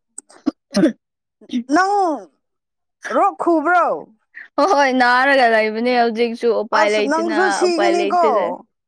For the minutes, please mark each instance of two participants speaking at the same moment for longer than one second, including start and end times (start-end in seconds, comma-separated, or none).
6.7-8.3